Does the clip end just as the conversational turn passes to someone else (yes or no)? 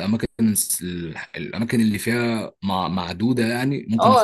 yes